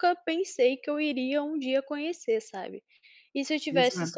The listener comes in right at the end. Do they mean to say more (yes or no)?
no